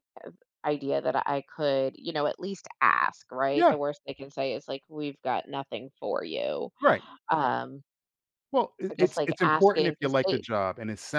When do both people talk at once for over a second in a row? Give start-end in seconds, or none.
8.9-10.4